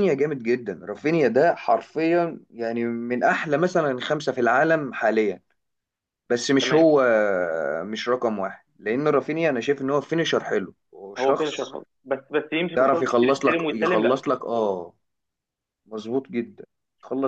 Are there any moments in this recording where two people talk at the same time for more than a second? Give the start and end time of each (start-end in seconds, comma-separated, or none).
12.7-14.2